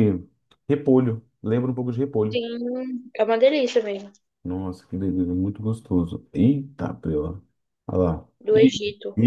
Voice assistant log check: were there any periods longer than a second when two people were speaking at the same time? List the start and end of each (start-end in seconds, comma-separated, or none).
none